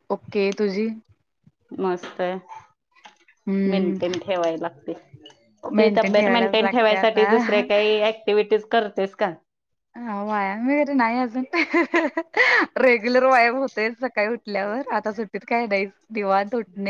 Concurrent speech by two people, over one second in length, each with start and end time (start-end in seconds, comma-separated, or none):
5.8-7.6